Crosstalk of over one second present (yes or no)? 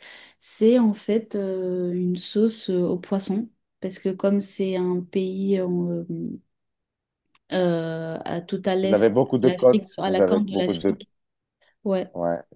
yes